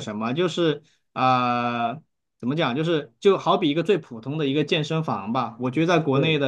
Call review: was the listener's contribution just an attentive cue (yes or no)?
yes